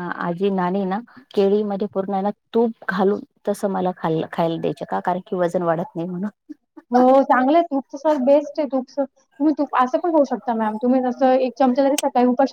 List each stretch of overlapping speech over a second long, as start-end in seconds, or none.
none